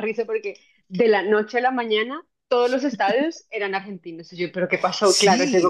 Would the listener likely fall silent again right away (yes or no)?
no